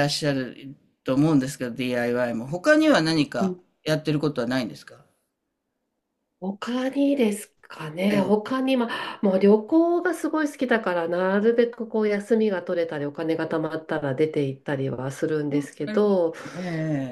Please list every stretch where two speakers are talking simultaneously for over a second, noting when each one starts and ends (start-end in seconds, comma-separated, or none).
none